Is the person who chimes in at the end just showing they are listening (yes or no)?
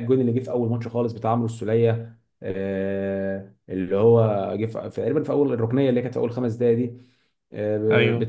yes